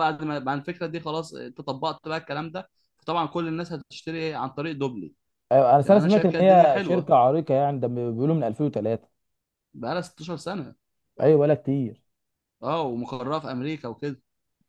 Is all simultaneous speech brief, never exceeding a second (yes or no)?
no